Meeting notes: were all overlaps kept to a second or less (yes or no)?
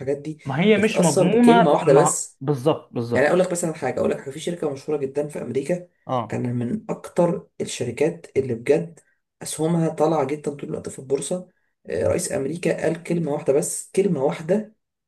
no